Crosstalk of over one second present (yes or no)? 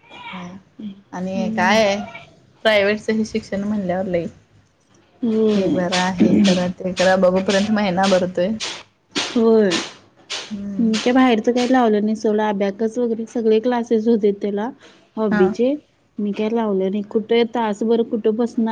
no